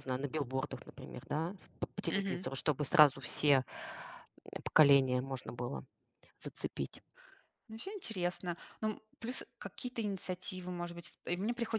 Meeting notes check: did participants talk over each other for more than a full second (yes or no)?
no